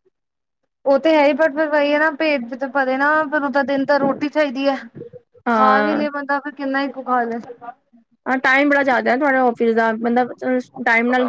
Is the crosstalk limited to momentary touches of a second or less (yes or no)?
yes